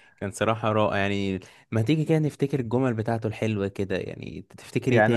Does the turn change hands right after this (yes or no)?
yes